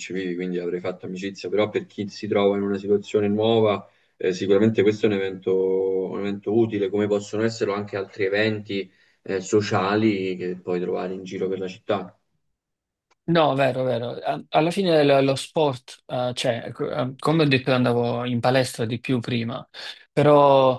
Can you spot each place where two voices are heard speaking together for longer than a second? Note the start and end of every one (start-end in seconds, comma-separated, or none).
none